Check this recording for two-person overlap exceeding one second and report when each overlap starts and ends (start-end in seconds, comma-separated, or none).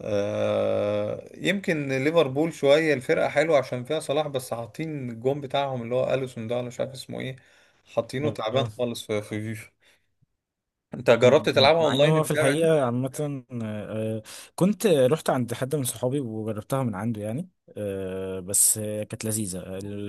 11.2-12.7